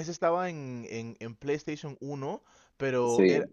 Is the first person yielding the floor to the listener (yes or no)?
no